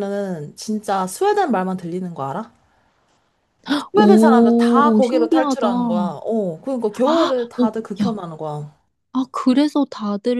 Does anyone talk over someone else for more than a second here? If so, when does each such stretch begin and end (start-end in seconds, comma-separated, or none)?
3.9-6.1